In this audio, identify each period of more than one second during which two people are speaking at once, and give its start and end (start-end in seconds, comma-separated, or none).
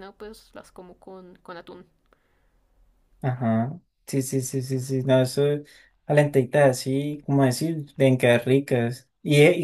none